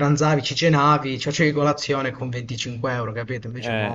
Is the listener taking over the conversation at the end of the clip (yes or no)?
yes